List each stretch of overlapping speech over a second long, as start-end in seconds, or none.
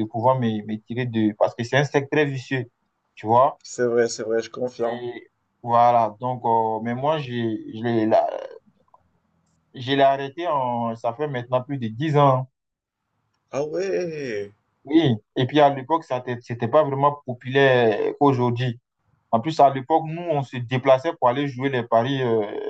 none